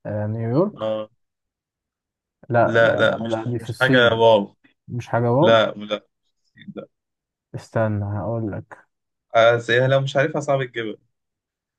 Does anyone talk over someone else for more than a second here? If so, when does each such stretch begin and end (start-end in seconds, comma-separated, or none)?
2.6-4.2